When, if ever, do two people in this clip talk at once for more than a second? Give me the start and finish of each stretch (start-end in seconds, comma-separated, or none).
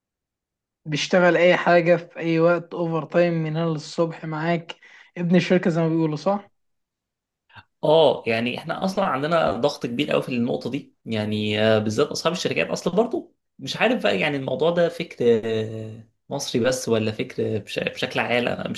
none